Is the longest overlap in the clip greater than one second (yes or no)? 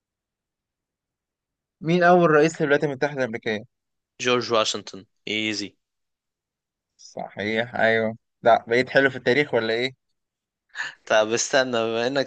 no